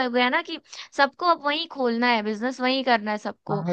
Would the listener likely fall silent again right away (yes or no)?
no